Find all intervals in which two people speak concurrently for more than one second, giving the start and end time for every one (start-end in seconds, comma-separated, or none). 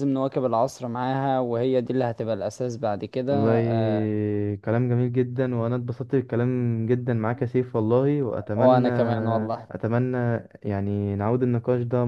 none